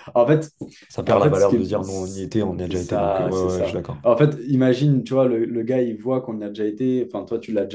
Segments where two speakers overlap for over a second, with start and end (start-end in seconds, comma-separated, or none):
2.6-4.0